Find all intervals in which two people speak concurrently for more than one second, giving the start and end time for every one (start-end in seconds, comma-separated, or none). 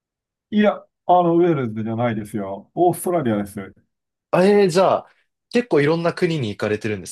none